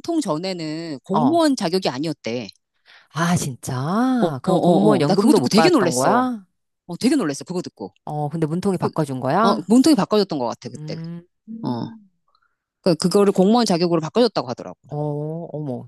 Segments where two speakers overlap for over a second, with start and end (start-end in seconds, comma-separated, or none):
4.2-6.3